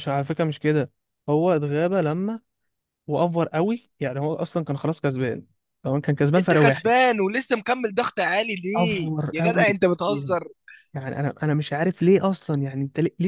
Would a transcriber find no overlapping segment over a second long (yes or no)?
no